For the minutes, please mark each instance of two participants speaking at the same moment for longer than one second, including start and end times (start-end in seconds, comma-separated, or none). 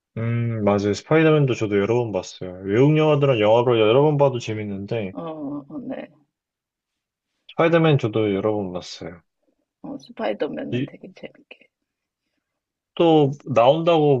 none